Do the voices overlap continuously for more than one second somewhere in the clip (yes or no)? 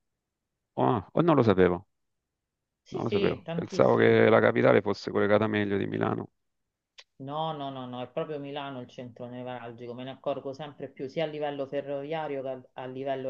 yes